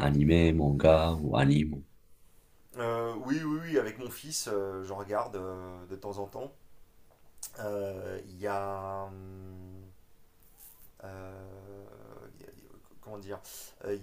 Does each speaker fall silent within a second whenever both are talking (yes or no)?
yes